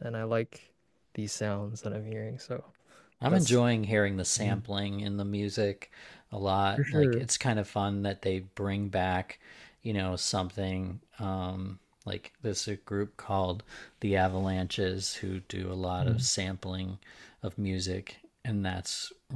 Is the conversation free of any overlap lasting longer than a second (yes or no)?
yes